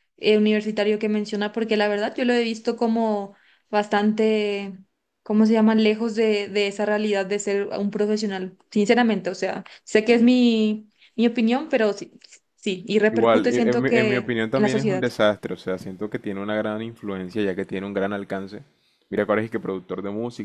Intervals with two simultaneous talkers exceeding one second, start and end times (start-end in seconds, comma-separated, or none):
13.1-15.0